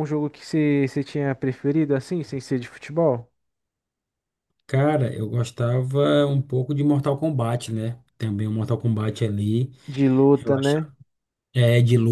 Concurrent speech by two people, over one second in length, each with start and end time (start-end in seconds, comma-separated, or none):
none